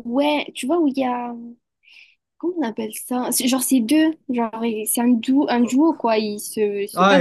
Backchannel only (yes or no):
no